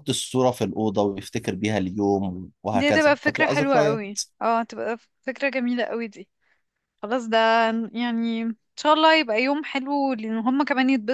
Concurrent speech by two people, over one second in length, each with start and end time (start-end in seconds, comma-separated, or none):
2.7-4.0